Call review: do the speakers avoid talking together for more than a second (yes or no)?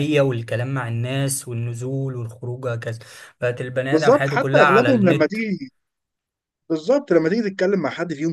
no